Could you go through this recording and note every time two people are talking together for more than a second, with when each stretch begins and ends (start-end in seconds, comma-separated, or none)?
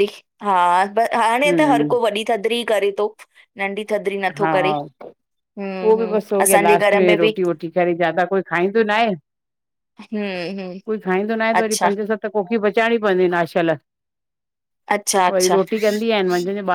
5.8-7.4